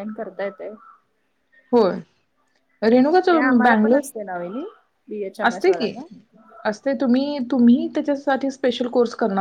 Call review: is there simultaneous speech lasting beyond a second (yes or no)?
no